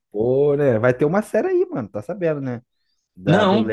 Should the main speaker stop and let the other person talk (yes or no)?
no